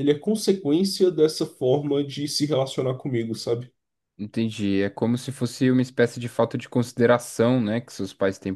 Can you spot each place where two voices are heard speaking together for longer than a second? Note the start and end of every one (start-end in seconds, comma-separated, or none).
none